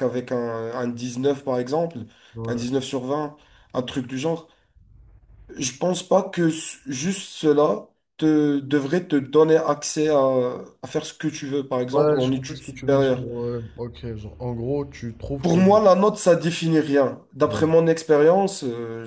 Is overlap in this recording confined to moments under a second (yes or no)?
no